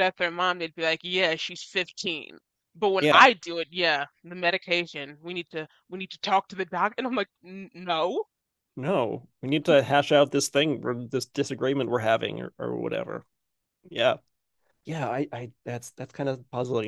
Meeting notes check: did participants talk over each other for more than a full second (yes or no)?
no